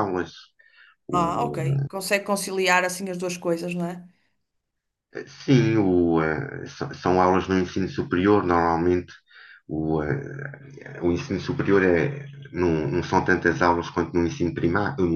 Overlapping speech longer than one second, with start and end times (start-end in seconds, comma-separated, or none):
none